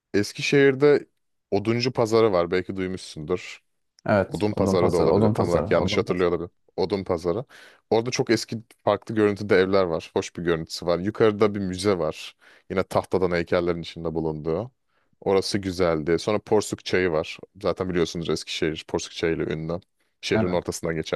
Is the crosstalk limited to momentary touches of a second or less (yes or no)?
no